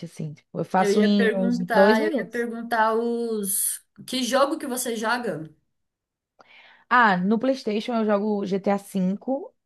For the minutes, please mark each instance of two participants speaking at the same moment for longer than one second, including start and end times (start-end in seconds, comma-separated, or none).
0.8-2.5